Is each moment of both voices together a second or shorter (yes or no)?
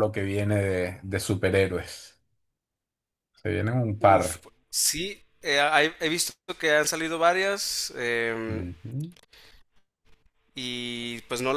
yes